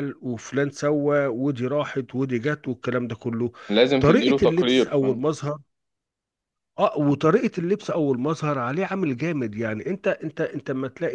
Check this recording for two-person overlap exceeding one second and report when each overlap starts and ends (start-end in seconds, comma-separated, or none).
4.0-5.3